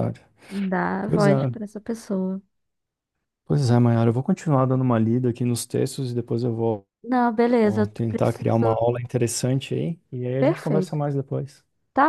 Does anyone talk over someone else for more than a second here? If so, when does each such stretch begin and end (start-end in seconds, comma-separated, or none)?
7.6-8.9